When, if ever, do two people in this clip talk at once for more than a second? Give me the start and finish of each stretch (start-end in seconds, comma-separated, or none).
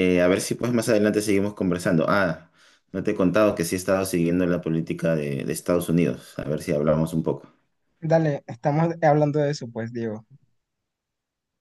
none